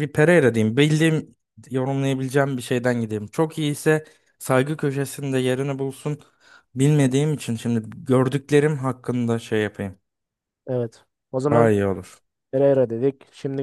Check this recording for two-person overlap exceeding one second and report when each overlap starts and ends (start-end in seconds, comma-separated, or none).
none